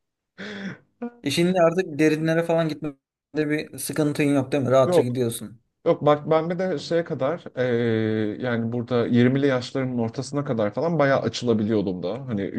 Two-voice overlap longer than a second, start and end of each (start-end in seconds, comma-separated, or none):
none